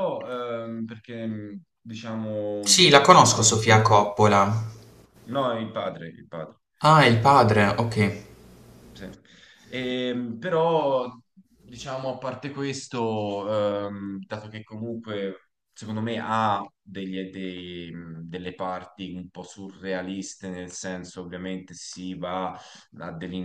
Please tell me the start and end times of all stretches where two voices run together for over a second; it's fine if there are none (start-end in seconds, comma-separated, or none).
2.6-3.9